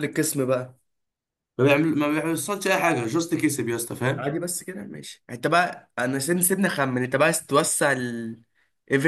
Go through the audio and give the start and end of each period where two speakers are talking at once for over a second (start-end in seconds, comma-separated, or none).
none